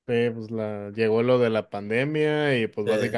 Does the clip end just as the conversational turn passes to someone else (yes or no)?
no